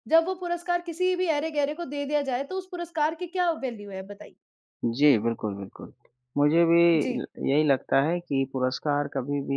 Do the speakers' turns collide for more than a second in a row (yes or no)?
no